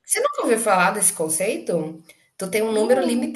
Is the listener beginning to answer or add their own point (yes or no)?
no